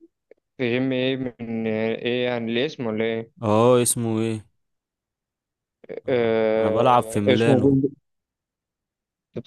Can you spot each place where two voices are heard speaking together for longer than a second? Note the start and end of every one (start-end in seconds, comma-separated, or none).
6.1-7.8